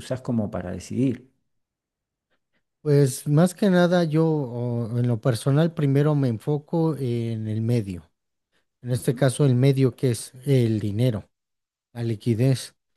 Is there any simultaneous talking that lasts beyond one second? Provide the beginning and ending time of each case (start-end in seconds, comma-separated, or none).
none